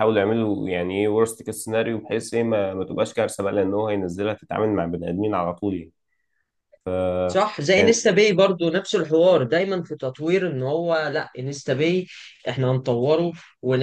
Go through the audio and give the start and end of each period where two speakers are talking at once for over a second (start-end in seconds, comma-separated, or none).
none